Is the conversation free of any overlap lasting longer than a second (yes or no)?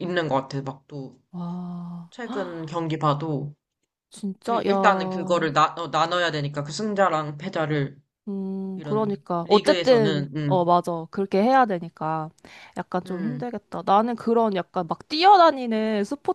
no